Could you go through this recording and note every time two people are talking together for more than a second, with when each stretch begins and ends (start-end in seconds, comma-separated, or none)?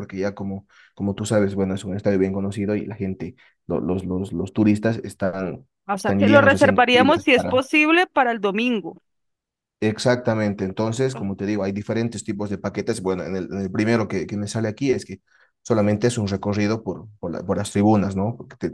5.9-7.6